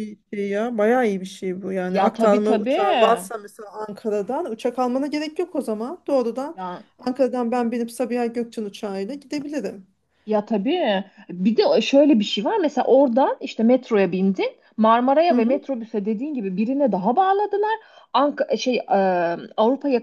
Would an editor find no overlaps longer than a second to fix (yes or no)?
no